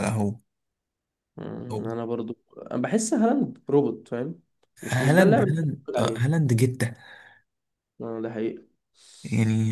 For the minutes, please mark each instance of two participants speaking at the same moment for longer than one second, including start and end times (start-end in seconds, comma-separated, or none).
4.9-6.3